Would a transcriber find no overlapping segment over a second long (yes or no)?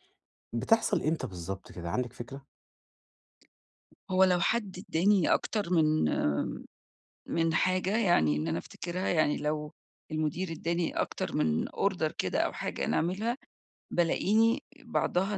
yes